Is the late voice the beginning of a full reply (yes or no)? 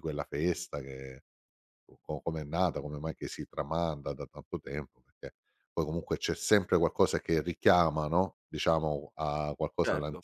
no